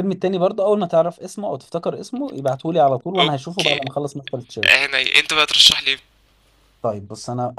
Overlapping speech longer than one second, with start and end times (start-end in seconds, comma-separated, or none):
none